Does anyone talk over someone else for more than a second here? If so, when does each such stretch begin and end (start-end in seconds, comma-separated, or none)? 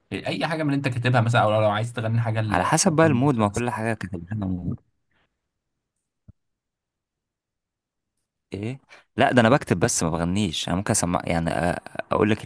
2.5-3.7